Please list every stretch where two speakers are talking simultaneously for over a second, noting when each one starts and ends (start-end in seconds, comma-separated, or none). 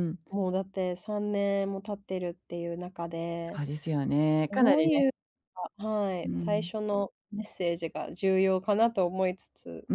none